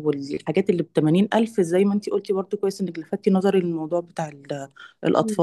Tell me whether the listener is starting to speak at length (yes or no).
yes